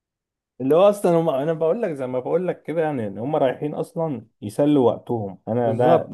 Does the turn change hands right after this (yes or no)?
yes